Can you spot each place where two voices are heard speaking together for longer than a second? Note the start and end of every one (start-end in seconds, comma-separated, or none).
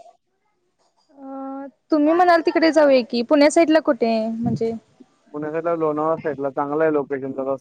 none